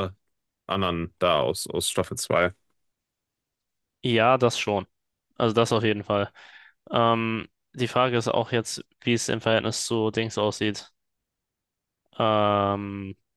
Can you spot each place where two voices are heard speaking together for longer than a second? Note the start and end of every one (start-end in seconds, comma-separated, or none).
none